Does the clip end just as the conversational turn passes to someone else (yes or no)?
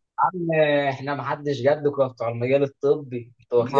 yes